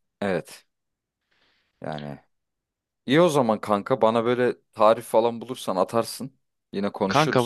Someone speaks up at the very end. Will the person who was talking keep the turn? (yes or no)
no